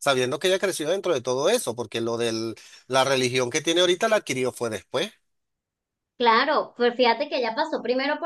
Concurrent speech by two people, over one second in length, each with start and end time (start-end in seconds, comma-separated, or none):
none